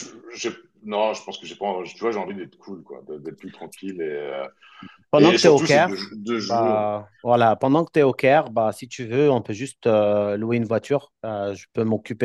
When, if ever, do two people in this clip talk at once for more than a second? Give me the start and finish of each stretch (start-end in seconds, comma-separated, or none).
5.2-6.9